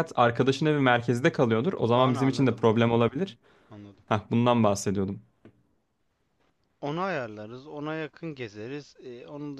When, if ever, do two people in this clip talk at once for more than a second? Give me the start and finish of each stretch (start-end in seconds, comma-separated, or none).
1.9-3.2